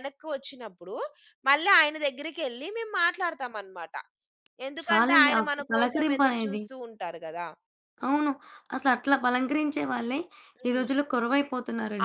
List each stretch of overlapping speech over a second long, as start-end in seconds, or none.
4.8-6.6